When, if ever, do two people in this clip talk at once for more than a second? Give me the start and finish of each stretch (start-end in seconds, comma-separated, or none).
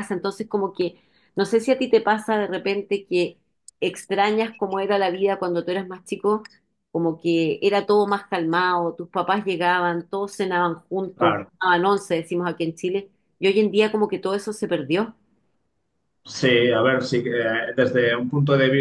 none